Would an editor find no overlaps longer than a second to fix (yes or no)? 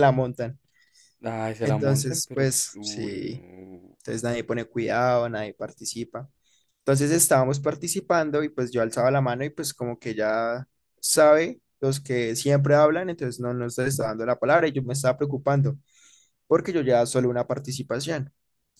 no